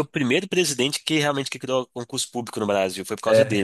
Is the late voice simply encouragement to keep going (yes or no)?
no